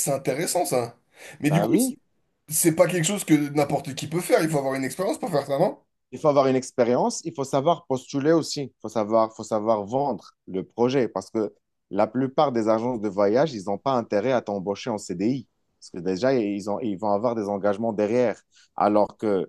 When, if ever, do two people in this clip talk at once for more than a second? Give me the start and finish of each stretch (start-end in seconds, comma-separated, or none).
none